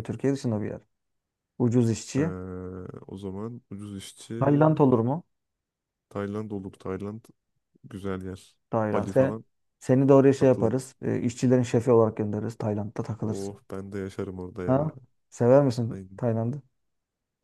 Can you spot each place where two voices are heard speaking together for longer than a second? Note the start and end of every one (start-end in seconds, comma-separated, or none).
none